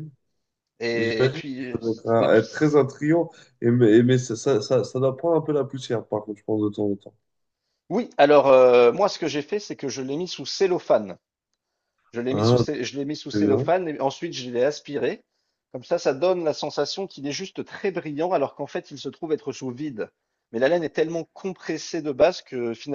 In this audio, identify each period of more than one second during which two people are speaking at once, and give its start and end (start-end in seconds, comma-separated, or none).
0.9-2.3